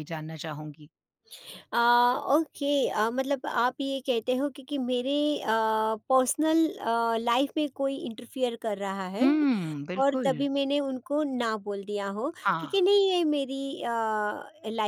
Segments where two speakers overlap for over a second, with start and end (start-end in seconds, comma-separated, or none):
none